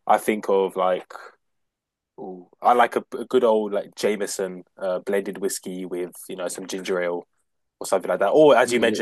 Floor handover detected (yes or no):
no